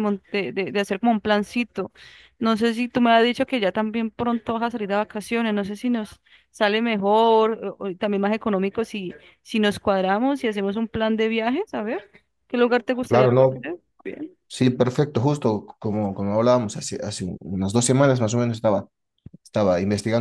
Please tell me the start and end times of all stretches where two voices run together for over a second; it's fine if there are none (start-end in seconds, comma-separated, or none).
none